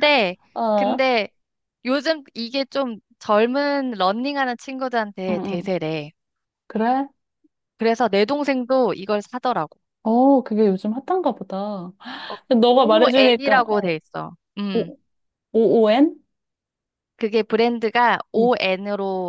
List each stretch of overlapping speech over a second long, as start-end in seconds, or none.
12.6-13.9